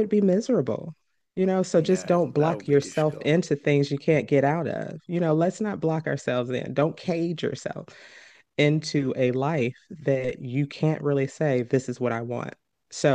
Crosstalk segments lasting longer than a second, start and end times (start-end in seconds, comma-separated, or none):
1.8-3.3